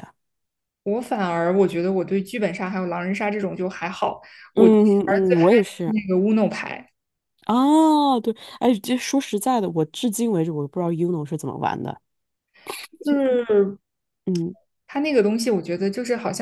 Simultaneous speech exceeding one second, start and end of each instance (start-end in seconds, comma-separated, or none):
4.5-5.9